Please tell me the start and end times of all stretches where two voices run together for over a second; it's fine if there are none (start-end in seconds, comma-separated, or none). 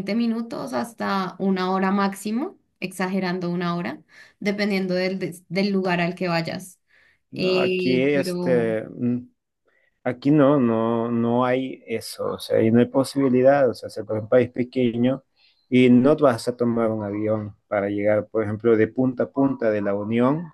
7.3-8.8